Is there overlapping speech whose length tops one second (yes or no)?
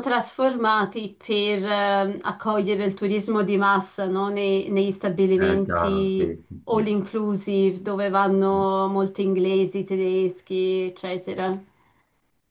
yes